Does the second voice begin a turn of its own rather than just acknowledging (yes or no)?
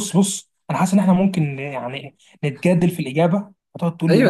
yes